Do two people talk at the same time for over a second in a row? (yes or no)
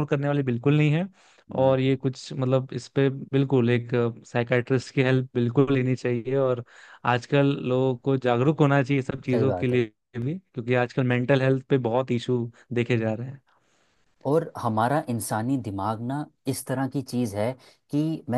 no